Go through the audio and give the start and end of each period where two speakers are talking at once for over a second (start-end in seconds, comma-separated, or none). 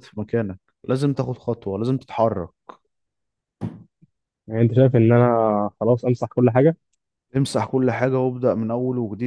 none